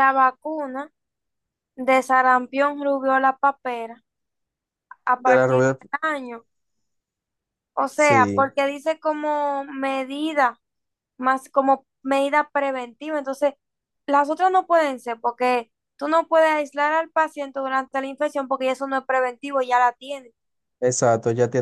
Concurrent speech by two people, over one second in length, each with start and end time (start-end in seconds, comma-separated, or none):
none